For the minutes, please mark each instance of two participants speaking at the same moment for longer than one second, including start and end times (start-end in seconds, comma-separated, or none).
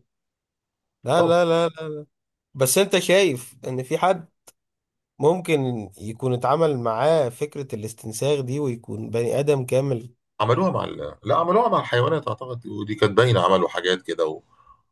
none